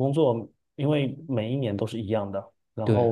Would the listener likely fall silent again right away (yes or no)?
yes